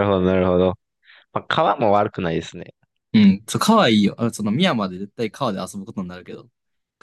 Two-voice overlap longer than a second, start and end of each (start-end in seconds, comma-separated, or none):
none